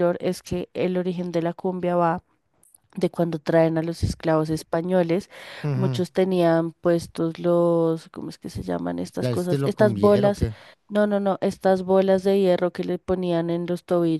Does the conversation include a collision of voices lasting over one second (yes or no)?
yes